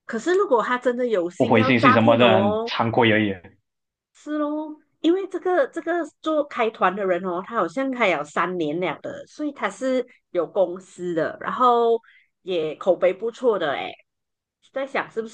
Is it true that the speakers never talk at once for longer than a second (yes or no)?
no